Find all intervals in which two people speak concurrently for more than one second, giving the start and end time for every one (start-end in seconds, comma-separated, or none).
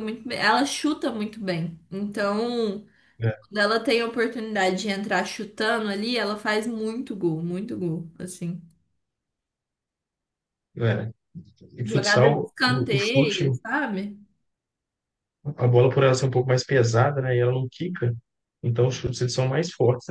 11.8-13.5